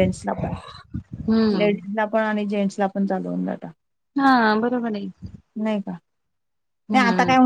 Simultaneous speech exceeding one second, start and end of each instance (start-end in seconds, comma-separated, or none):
none